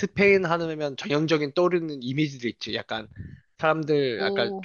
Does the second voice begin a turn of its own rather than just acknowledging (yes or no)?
no